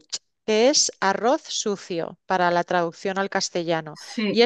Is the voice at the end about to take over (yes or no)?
no